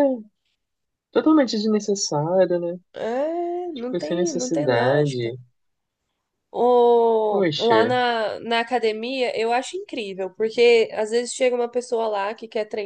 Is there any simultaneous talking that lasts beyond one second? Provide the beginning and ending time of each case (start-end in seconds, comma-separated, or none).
3.8-5.4